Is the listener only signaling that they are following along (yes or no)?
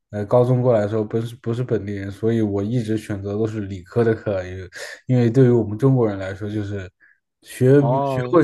yes